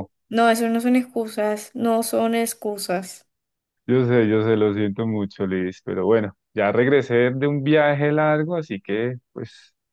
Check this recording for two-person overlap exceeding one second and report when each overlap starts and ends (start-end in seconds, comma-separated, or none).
none